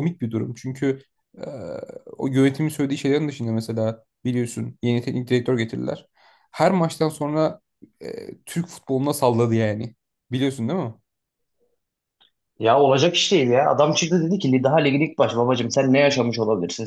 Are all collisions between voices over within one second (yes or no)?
yes